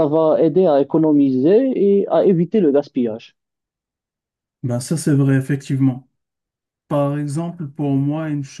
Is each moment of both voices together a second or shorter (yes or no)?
yes